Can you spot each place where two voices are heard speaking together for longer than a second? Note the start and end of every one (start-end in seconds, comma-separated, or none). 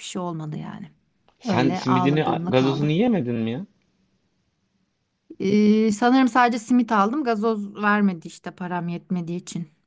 1.5-3.0